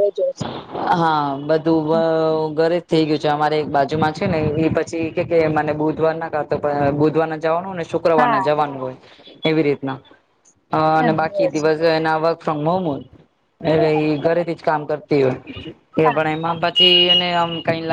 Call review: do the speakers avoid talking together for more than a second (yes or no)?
yes